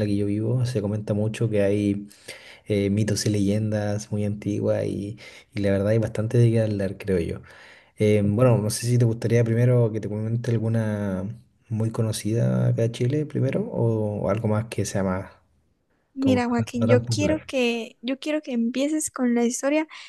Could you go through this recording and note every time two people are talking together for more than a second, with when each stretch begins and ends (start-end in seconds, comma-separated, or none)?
16.2-17.5